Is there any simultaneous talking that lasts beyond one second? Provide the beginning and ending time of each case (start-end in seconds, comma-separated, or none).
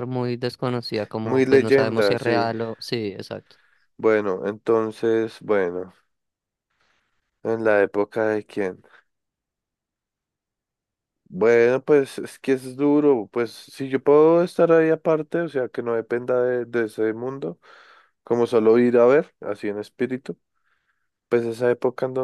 1.2-2.5